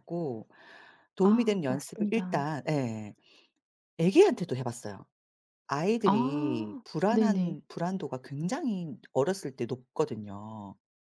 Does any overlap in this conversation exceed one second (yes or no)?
yes